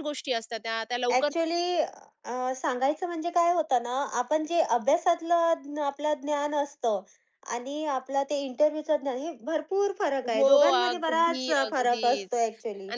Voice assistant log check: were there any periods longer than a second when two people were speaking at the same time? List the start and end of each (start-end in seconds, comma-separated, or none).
10.3-12.3